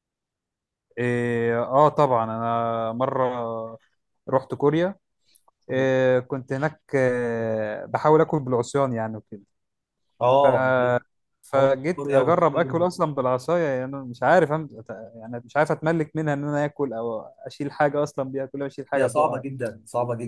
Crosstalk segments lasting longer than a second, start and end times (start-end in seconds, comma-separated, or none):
11.6-12.9